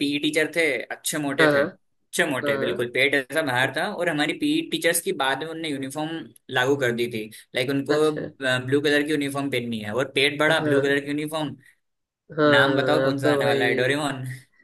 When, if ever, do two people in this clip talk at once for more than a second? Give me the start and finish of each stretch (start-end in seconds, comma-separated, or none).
12.6-13.9